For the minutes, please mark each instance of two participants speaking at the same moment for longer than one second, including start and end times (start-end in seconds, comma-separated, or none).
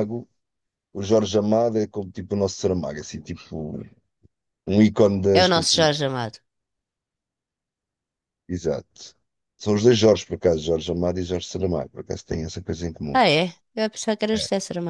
none